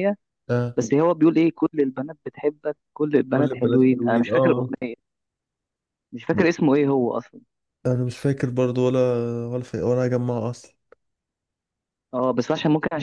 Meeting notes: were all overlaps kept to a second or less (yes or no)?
no